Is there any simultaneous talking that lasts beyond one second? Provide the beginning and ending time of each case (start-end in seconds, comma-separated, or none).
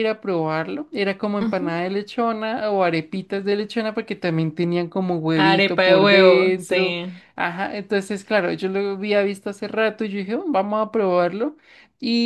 5.4-7.0